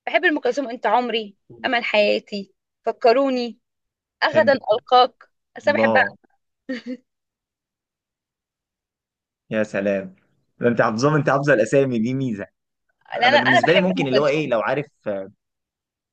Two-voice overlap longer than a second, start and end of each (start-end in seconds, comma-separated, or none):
13.2-14.6